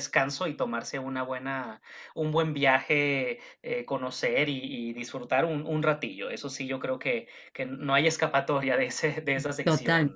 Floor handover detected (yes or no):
yes